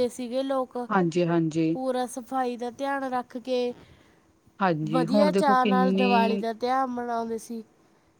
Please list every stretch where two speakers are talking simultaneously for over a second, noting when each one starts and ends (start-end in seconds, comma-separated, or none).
4.9-6.4